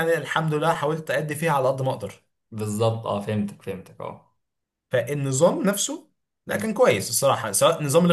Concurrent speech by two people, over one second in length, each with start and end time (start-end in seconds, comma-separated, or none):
none